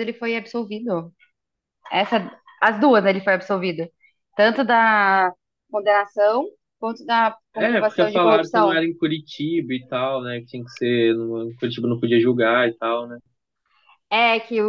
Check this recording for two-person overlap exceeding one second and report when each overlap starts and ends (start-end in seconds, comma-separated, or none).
7.5-8.8